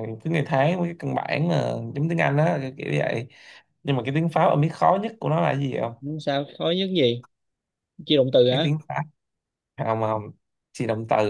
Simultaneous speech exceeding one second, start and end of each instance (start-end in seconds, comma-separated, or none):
none